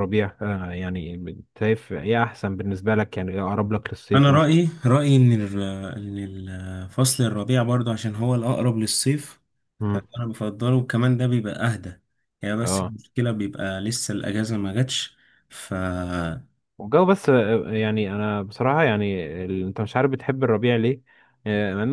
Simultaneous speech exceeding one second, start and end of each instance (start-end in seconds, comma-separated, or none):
none